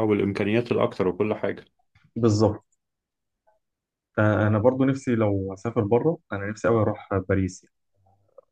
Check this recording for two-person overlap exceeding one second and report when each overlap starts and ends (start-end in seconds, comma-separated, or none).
none